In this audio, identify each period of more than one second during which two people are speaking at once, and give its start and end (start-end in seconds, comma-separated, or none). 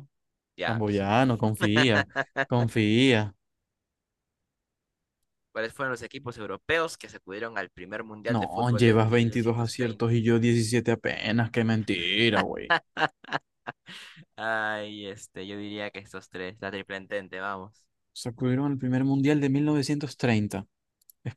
8.3-10.1